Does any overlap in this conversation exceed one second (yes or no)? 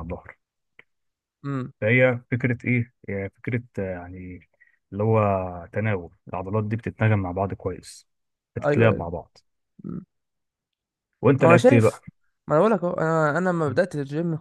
no